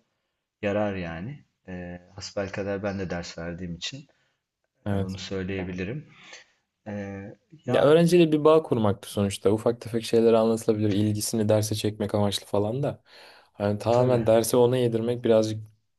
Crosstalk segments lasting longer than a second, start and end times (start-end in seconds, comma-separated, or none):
none